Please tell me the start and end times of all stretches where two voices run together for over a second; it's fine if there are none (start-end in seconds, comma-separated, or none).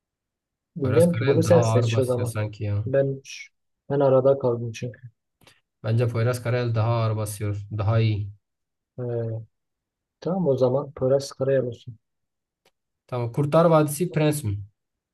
0.8-2.4